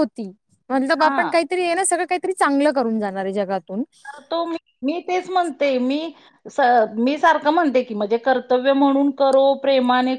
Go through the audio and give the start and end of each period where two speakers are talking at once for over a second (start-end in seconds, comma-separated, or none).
none